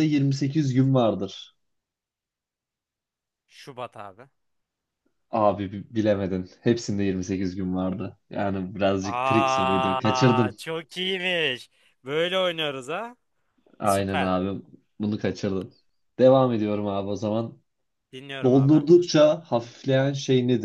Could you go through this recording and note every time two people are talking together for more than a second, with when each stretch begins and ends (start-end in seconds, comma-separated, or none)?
9.0-10.6